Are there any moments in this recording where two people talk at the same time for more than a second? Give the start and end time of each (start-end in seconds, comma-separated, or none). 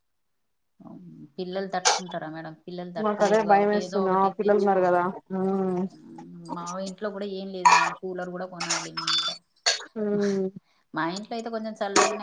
3.1-5.1